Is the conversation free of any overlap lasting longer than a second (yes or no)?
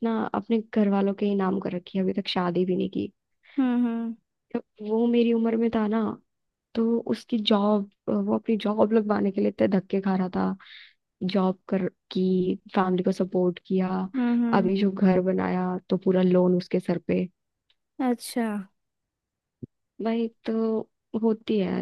yes